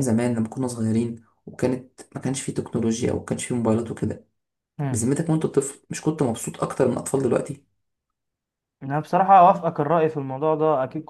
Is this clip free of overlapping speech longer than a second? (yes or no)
yes